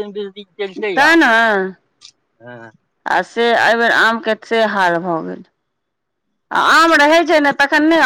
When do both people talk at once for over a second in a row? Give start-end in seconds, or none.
none